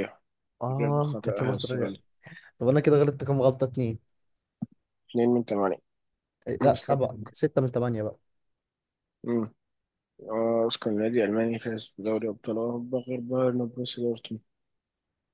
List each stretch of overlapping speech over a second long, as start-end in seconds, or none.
0.7-2.0